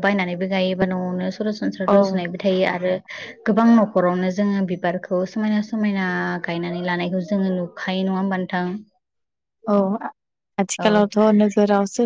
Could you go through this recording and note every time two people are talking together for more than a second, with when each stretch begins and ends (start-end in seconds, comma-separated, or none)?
none